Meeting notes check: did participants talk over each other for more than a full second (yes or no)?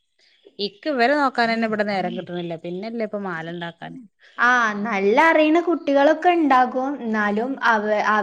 no